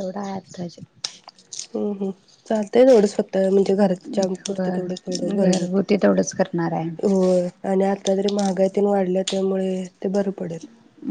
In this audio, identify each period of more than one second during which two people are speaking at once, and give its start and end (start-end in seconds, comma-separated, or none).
4.5-5.8